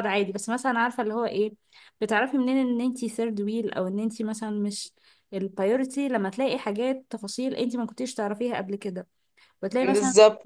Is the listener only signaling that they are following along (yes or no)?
yes